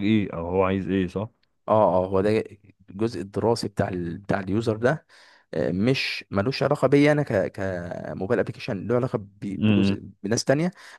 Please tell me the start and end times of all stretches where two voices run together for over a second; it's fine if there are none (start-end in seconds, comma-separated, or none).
none